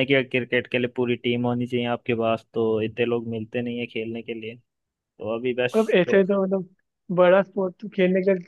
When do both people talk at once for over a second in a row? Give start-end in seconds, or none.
none